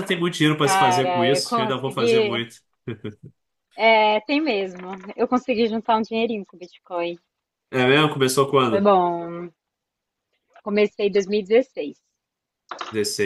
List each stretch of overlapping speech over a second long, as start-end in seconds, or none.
0.6-2.4